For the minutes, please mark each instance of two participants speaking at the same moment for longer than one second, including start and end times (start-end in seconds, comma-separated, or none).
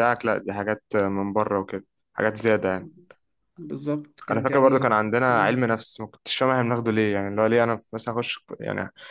4.3-5.6